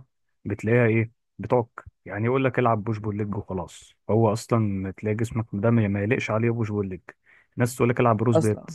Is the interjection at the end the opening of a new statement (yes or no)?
no